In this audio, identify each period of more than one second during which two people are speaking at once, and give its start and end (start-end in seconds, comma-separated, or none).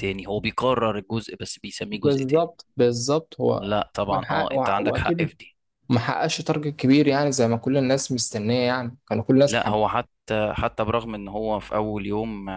3.5-5.3